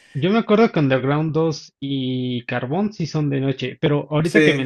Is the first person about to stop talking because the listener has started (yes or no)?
no